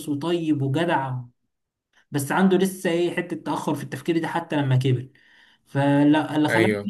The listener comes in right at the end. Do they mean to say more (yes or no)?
no